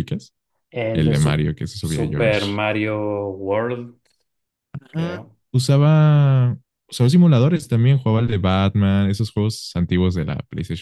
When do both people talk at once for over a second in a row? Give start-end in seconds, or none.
0.9-2.6